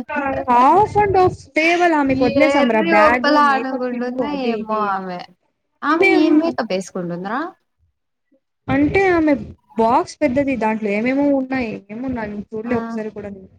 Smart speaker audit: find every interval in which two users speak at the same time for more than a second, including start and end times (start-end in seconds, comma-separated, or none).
2.4-4.8